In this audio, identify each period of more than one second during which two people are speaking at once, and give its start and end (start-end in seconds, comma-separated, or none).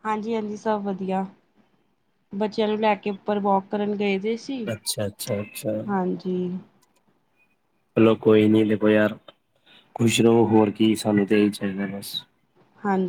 none